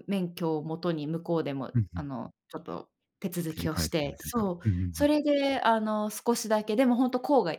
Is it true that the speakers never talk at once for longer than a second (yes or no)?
no